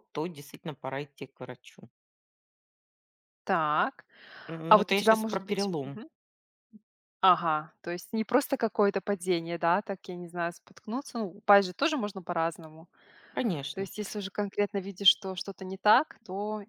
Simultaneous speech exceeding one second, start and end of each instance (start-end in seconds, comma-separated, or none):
4.7-6.0